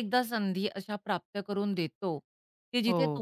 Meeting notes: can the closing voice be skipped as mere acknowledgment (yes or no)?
yes